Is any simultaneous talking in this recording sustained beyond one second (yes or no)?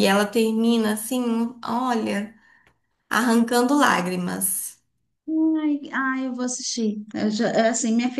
no